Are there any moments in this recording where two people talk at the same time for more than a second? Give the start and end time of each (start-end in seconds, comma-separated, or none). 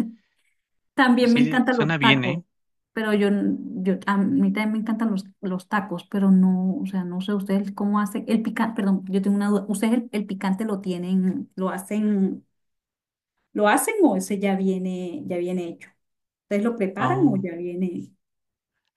1.2-2.4